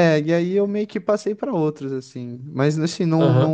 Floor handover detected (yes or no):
yes